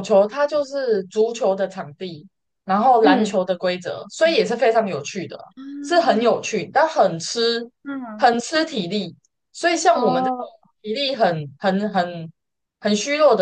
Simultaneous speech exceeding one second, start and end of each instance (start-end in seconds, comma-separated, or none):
none